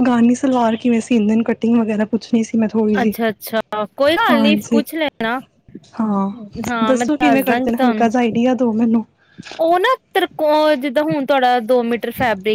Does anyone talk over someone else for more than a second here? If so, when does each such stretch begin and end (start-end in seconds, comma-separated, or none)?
6.9-8.1